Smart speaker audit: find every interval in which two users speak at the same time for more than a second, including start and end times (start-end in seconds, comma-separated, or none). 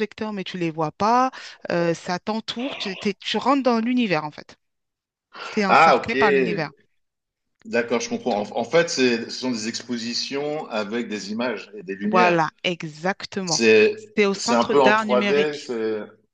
14.3-15.7